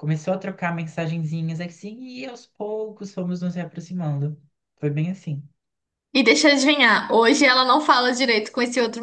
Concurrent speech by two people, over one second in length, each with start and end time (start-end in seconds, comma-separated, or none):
none